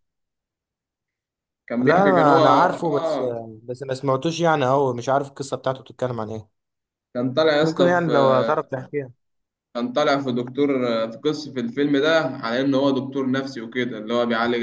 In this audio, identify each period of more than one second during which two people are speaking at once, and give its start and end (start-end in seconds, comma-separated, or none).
1.8-3.2